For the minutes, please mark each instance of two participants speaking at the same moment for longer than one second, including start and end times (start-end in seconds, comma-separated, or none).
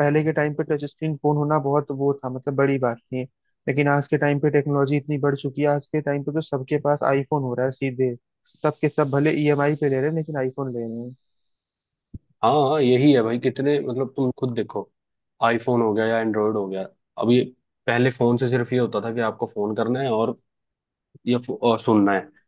none